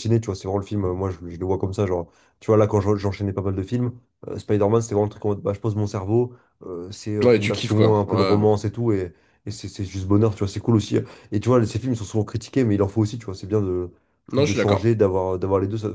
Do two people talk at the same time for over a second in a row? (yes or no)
yes